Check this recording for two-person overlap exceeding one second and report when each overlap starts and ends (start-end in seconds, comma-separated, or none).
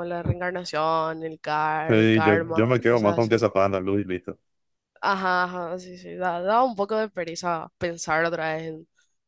1.9-3.5